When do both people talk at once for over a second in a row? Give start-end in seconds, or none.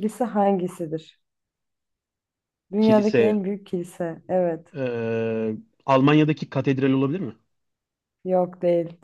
none